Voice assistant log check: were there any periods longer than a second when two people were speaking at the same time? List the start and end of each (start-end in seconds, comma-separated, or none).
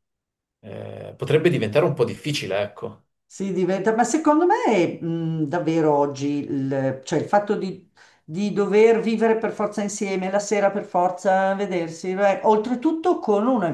none